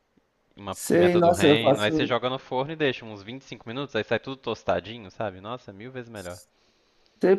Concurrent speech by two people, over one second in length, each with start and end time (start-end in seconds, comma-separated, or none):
0.7-2.1